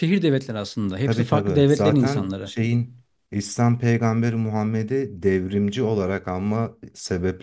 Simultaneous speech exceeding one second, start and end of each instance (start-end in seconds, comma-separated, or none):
1.0-2.5